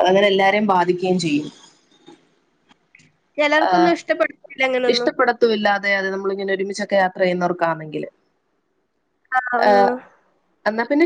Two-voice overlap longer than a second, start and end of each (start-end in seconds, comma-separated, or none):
none